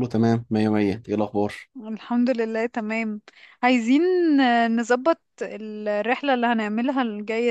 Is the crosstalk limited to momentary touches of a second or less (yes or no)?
yes